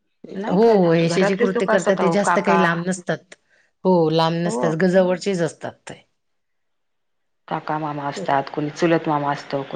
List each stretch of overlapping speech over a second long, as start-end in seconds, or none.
0.5-2.6